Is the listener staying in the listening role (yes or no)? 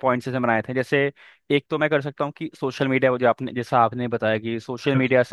yes